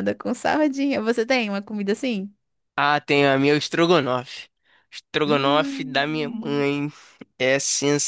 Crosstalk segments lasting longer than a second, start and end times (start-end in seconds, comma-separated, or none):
5.3-6.7